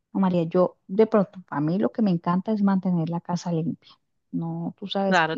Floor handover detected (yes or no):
yes